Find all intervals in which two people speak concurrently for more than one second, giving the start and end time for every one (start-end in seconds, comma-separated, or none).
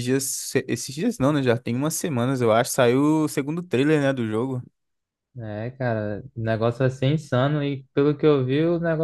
none